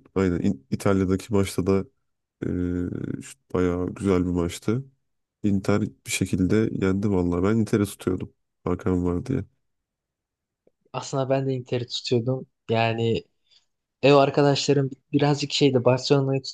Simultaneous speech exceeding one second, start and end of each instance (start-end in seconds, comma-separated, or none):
none